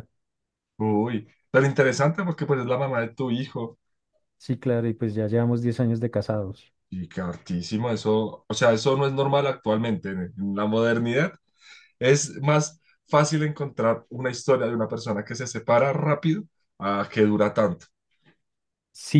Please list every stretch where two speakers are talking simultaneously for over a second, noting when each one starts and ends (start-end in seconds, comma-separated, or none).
none